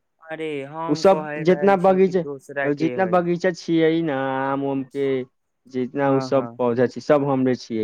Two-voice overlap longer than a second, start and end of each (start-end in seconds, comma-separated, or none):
0.9-3.3